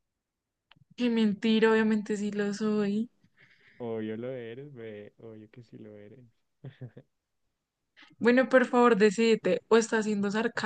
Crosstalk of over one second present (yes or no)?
no